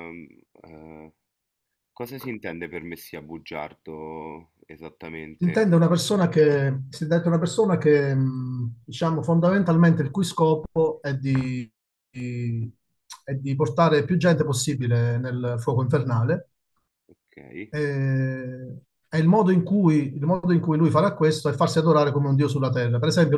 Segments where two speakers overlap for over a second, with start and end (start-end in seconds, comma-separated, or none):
none